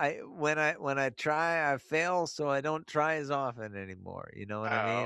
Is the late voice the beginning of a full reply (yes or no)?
yes